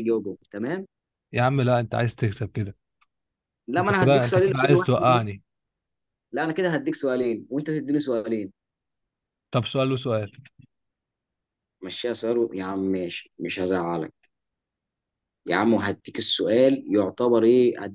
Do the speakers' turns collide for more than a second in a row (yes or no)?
yes